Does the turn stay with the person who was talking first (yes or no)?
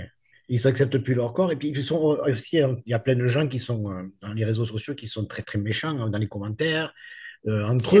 yes